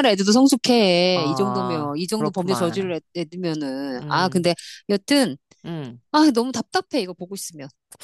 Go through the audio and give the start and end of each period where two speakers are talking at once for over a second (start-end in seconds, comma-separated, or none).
1.1-3.0